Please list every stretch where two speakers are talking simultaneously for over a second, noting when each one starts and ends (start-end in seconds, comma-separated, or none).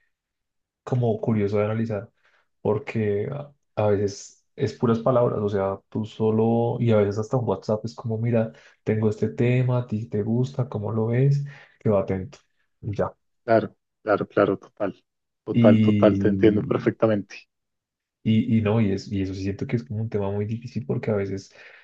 15.5-16.9